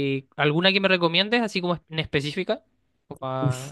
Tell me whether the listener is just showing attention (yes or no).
no